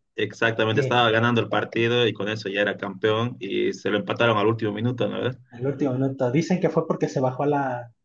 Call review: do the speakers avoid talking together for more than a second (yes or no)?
yes